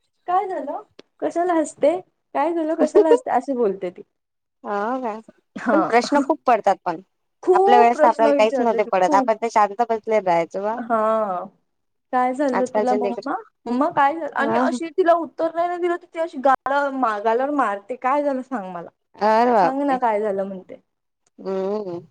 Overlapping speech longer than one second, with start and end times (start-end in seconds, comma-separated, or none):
7.6-9.3